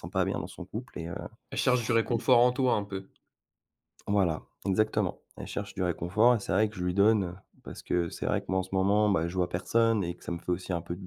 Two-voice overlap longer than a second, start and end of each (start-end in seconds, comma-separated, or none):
none